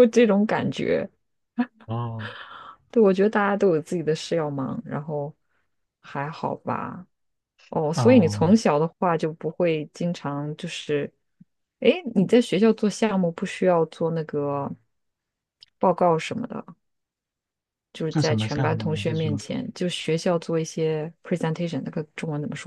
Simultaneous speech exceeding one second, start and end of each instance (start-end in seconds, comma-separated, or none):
18.1-19.4